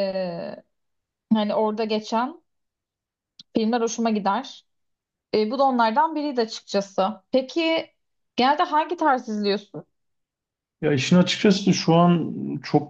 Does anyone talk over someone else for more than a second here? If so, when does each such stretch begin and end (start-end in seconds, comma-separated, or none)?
none